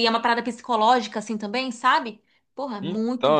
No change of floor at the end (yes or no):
no